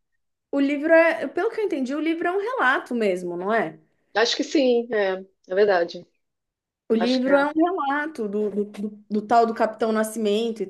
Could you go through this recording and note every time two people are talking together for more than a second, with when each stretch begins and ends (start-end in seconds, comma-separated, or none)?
none